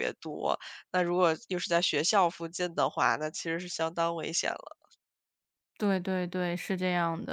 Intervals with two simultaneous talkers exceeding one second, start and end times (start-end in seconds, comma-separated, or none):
none